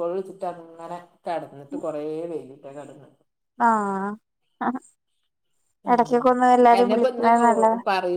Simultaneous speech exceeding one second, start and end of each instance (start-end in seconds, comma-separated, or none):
none